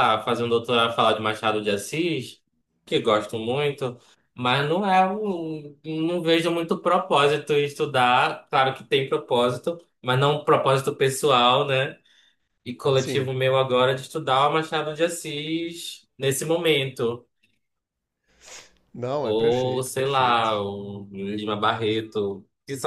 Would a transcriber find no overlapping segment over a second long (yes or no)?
no